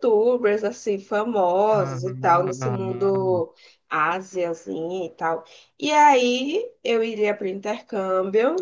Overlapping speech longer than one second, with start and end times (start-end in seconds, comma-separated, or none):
1.7-3.5